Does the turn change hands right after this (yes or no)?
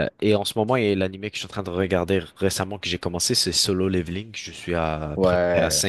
no